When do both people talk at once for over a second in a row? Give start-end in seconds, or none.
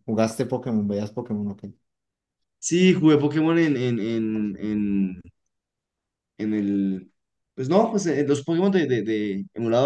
none